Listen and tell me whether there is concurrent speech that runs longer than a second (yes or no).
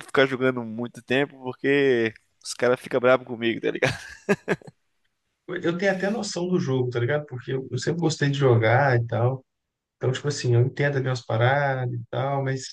no